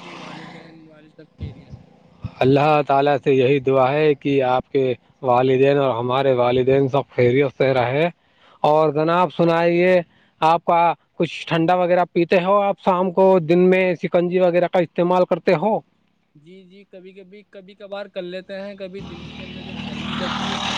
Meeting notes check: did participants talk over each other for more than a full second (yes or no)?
no